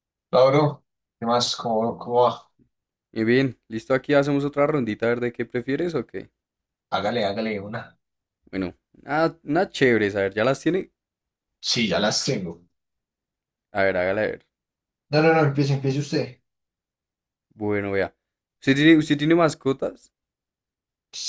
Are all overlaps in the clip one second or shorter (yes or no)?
yes